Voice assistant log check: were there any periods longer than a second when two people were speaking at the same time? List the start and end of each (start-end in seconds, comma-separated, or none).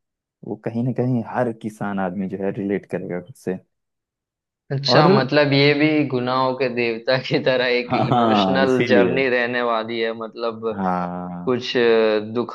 7.9-9.2